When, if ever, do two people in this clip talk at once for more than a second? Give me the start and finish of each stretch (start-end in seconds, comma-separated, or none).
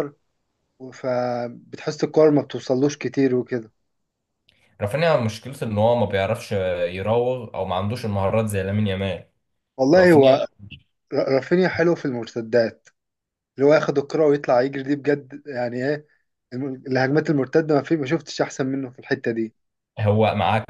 none